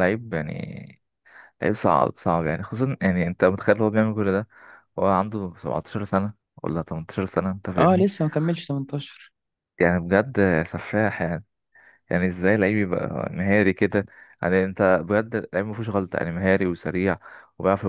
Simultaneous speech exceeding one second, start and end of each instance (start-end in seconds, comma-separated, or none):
none